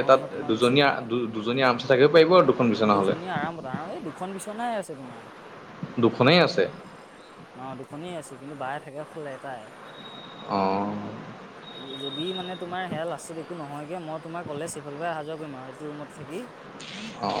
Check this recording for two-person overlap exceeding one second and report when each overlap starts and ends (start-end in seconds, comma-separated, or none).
none